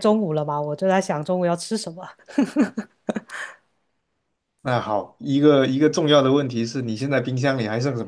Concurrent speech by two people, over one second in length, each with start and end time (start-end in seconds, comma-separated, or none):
none